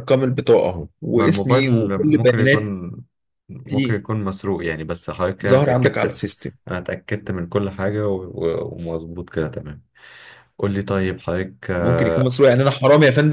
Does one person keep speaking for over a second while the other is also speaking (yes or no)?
yes